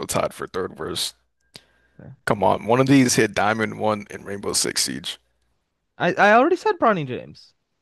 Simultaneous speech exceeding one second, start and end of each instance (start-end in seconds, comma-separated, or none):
none